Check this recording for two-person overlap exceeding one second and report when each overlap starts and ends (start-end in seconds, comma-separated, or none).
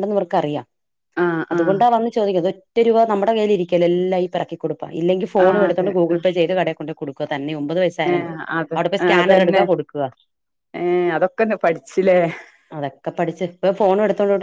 none